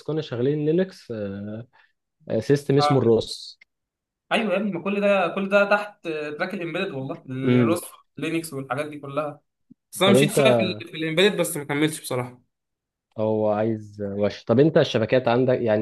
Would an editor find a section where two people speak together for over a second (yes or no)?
no